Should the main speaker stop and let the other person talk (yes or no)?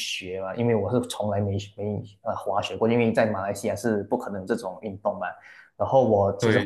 no